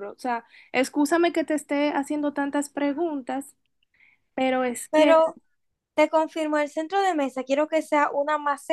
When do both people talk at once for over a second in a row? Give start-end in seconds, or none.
none